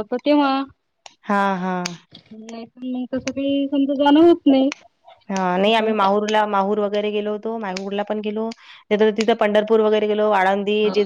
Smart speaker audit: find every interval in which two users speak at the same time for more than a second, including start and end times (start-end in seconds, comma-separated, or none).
none